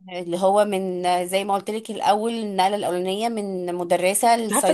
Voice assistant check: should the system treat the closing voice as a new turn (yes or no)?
yes